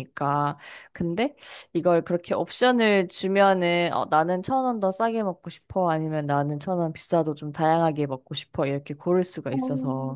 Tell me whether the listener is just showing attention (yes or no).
no